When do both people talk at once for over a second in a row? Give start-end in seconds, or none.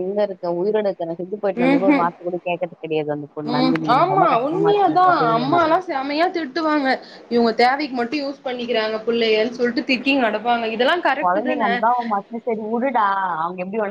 3.6-5.6